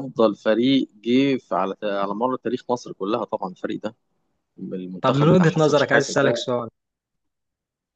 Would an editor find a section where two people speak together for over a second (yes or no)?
yes